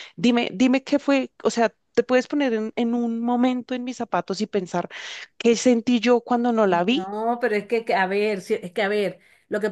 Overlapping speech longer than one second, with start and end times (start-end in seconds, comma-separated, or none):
none